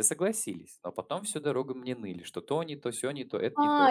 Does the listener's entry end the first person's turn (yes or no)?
yes